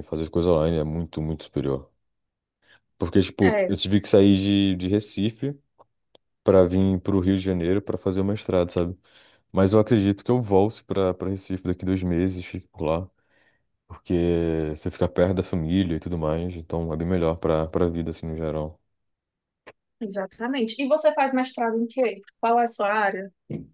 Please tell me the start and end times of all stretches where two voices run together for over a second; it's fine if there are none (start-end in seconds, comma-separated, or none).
none